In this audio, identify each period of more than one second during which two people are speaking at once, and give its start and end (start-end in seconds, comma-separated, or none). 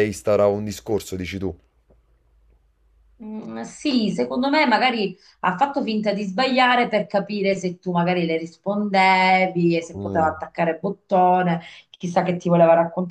none